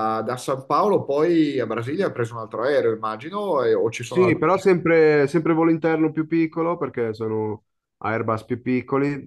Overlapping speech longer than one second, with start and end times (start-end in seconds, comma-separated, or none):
none